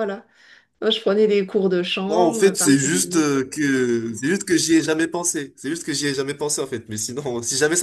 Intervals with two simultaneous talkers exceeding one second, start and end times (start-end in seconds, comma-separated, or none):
2.1-3.3